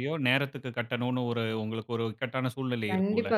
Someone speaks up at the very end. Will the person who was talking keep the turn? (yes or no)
no